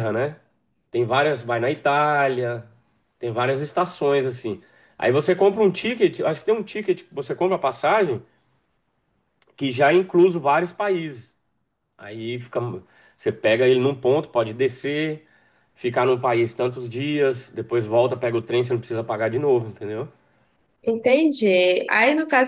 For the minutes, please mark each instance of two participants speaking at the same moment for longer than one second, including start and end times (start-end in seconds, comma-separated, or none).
none